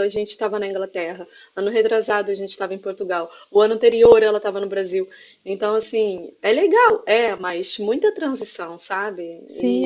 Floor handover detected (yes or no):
yes